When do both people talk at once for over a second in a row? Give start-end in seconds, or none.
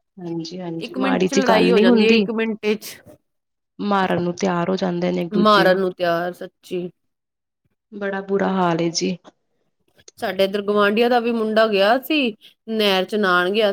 0.9-2.2